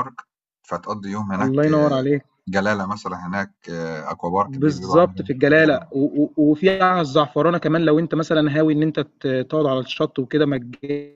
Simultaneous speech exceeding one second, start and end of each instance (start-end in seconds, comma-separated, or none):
4.5-6.0